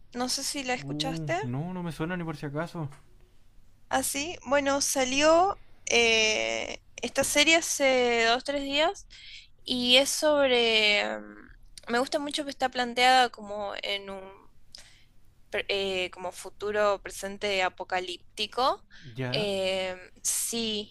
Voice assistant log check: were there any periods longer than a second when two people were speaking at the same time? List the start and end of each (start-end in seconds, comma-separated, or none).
none